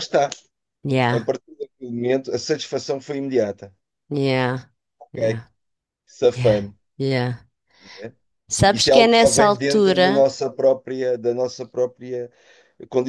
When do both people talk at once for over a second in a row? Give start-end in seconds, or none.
8.6-10.3